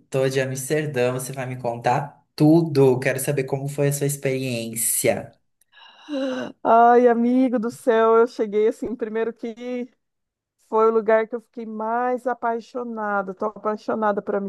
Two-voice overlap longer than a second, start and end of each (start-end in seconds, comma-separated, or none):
none